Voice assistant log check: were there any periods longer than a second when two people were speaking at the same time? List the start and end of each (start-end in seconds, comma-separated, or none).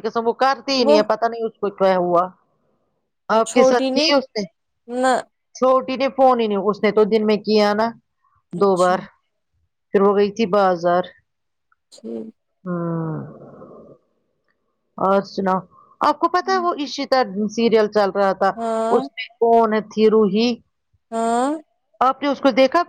none